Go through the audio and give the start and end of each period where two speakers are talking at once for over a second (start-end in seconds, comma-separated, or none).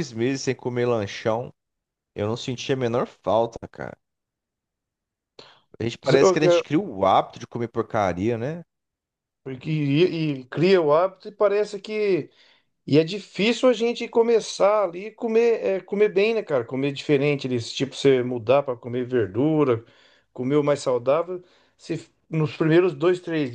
none